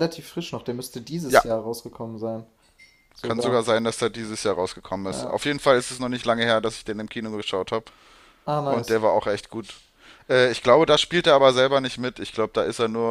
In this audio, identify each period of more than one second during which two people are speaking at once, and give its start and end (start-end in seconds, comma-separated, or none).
none